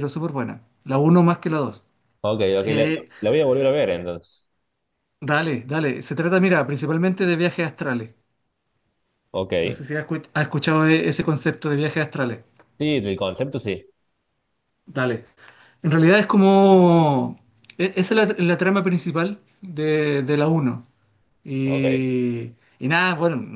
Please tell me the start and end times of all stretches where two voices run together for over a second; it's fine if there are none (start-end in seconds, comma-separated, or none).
none